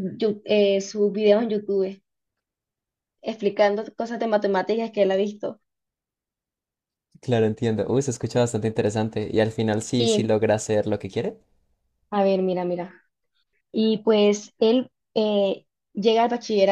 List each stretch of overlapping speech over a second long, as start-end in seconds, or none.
none